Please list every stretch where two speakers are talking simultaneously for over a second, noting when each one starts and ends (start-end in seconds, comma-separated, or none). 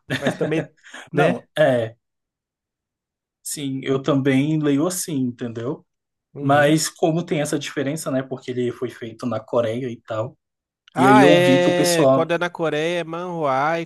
11.0-12.3